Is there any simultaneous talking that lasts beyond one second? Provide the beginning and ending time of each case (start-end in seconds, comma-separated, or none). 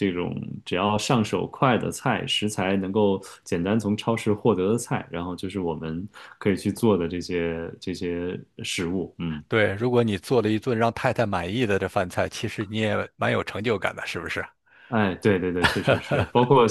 none